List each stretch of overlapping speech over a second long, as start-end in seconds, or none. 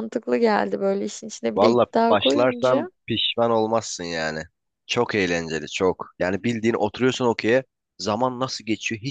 1.6-2.9